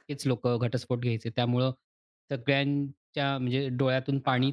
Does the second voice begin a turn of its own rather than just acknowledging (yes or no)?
no